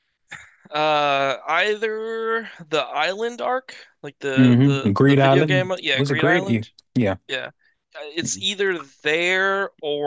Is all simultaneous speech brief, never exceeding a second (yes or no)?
no